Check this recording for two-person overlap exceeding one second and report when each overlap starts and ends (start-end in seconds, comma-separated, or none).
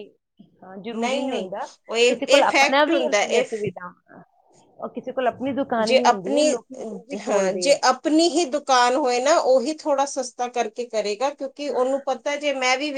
2.1-3.6